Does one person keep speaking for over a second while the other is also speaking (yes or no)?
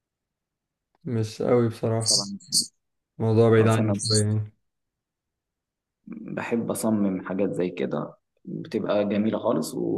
no